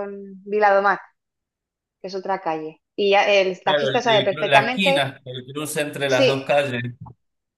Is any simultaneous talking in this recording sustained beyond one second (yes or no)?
yes